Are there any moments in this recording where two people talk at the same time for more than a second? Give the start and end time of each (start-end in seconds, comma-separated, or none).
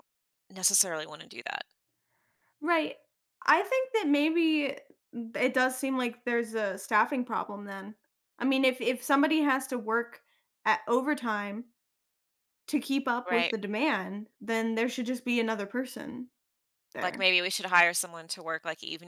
none